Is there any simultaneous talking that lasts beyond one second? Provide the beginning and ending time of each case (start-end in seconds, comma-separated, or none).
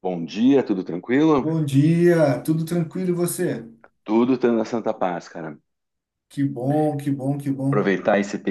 none